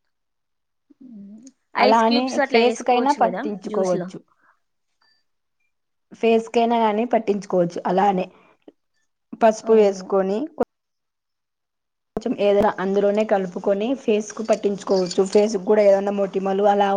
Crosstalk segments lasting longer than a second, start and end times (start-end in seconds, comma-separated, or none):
1.9-4.1